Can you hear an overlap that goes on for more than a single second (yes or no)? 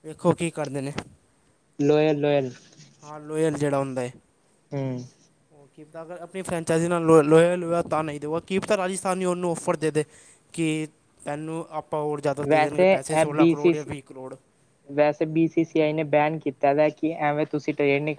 yes